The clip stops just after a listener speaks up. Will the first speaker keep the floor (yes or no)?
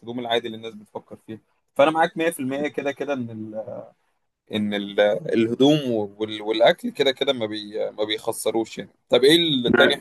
yes